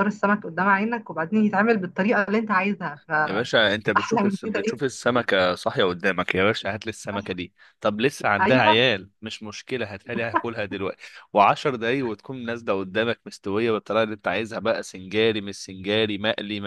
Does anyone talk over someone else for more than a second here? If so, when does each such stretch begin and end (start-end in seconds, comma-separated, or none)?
3.3-4.9